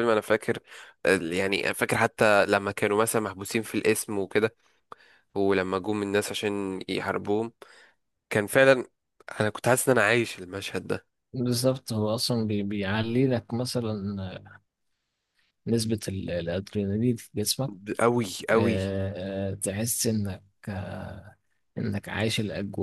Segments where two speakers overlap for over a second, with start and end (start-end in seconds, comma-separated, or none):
none